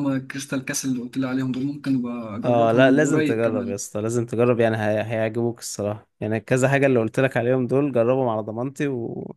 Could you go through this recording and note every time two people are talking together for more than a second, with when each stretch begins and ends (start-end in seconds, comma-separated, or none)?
2.4-3.8